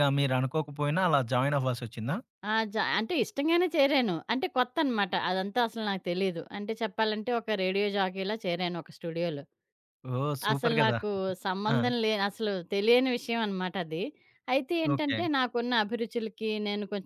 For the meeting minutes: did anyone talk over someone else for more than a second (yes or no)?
no